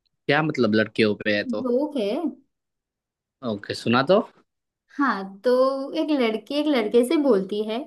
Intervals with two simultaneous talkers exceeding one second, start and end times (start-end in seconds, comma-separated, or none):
none